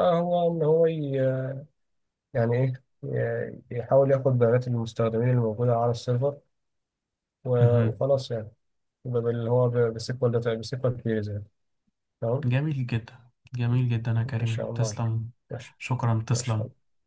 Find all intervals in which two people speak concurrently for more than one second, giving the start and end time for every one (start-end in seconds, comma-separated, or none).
none